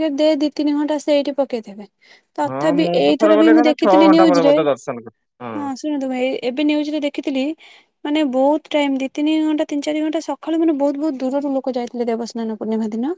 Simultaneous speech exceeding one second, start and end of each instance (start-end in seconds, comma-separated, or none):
2.5-4.5